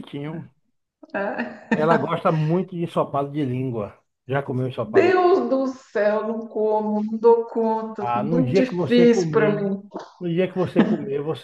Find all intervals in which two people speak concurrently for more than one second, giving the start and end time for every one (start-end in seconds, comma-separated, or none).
8.0-9.6